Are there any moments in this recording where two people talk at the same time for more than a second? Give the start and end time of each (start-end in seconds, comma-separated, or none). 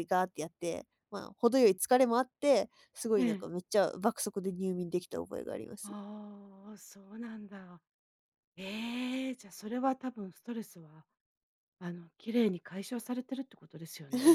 none